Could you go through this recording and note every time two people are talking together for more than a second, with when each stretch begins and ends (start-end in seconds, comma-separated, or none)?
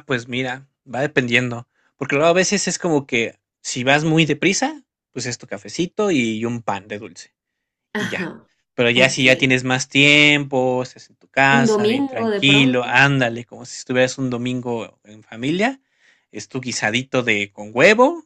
11.6-12.9